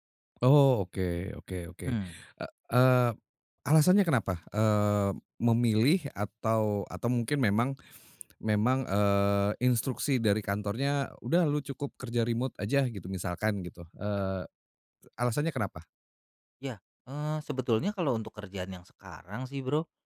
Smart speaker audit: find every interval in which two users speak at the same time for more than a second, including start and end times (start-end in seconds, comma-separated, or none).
none